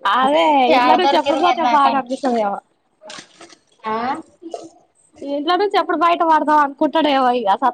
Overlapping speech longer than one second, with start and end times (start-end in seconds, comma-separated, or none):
0.7-2.3